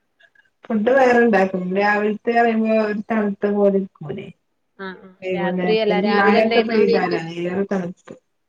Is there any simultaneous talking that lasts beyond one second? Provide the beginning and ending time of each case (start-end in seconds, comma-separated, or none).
5.2-6.8